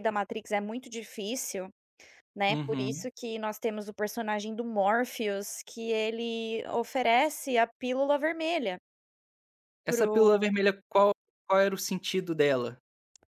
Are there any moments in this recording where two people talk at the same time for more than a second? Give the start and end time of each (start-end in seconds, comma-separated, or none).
none